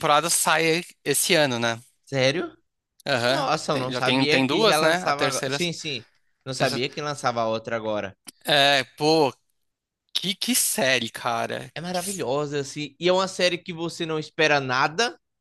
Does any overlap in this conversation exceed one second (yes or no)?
yes